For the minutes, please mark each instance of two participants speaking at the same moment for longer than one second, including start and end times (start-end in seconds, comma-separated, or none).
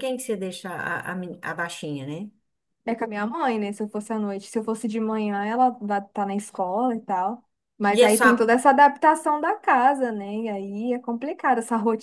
none